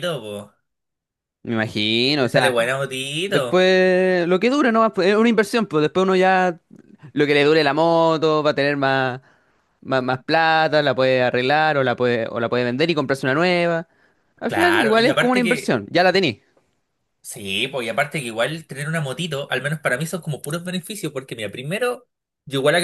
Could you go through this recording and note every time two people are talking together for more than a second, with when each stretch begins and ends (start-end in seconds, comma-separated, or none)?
14.5-15.8